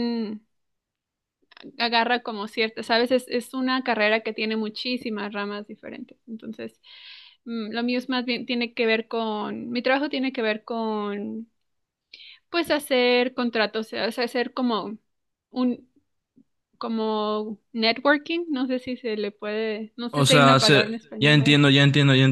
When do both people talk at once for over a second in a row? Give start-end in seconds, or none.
20.1-21.6